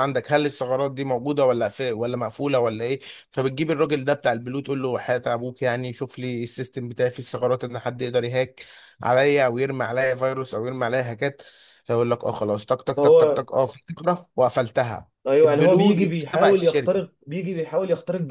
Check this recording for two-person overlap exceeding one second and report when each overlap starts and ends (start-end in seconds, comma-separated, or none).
15.3-17.0